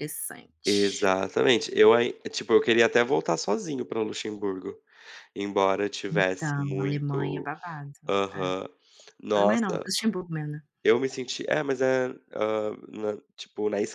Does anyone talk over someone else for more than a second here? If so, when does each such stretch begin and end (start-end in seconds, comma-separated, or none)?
6.1-7.5